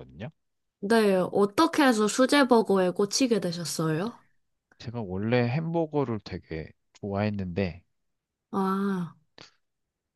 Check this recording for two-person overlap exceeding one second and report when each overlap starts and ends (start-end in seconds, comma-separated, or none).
none